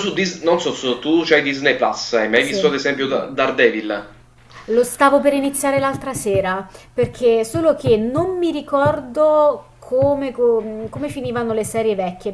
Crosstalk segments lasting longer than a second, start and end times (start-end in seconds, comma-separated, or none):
none